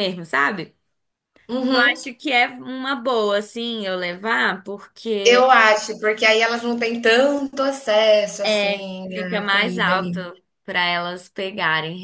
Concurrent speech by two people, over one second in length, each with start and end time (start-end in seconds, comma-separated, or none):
8.4-10.2